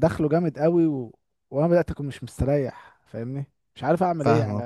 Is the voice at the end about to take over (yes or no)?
yes